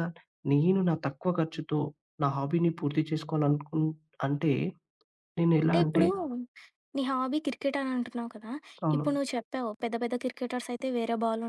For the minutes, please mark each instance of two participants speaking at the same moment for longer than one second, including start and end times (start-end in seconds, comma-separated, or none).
none